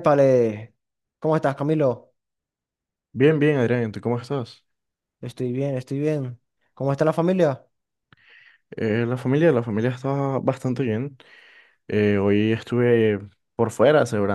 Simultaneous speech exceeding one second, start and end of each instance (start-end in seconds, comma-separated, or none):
none